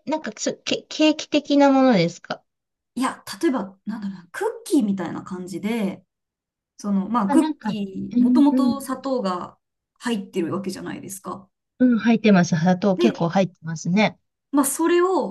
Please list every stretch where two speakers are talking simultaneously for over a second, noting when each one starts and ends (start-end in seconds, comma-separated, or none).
7.3-8.8